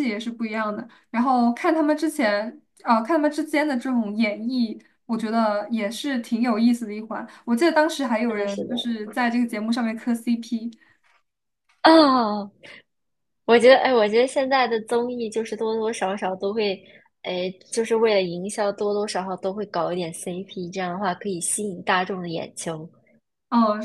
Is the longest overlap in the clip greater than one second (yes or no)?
no